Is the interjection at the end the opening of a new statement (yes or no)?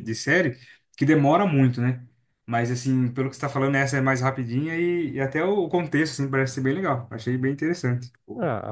yes